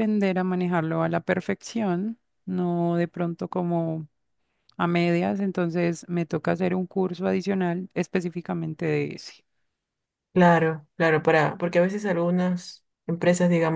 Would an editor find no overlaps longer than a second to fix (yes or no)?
yes